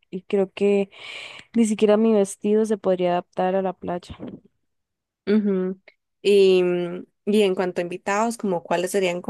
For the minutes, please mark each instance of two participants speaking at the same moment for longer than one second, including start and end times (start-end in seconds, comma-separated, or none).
none